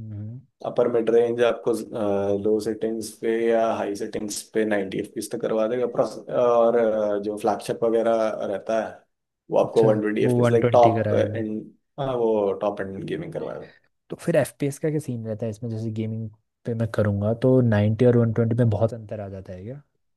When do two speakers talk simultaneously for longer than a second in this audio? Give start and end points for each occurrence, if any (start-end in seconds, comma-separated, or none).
9.6-11.4